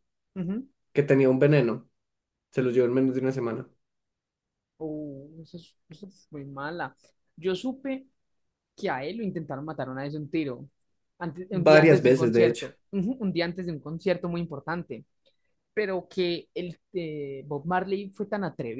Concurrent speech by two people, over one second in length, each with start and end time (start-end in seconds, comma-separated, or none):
11.5-12.7